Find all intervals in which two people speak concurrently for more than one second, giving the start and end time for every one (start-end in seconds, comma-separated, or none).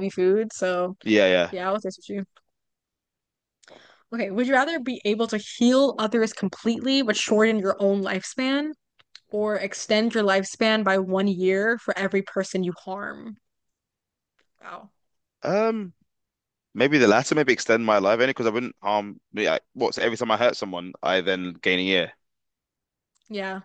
none